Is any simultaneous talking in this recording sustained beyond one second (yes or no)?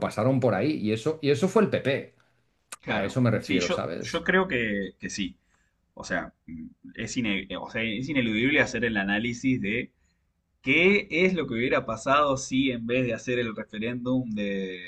yes